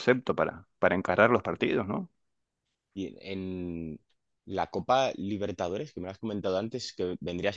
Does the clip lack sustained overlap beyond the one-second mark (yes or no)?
yes